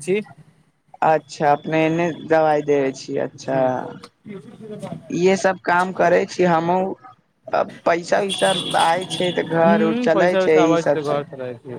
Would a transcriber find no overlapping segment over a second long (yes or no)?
no